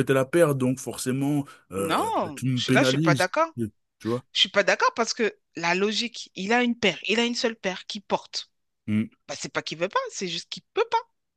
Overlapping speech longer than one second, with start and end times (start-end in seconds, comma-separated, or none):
1.8-3.3